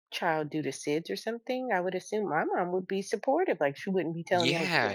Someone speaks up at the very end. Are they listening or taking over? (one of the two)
taking over